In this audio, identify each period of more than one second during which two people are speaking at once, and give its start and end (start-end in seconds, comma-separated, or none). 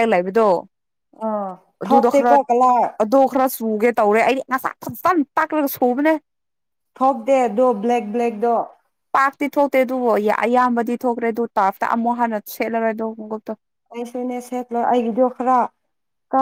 none